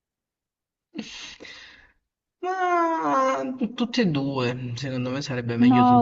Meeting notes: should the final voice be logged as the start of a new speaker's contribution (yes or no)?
yes